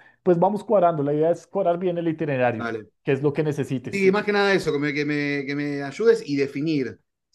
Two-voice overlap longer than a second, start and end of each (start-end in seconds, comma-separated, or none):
none